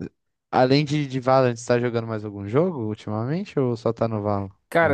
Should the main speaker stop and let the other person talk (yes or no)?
yes